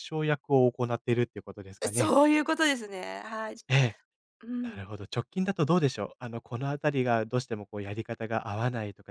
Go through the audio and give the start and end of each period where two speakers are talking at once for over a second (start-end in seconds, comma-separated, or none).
none